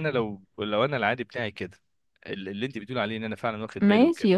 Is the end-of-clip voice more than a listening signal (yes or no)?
yes